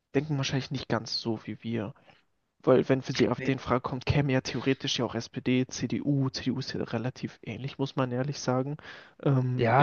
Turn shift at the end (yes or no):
yes